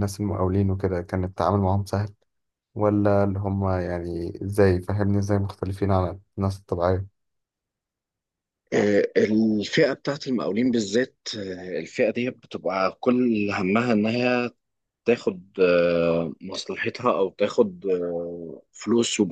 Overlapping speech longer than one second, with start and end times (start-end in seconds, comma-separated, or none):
none